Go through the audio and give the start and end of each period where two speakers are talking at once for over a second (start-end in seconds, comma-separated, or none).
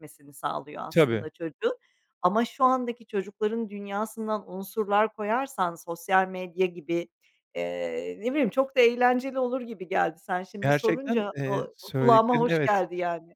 10.6-12.8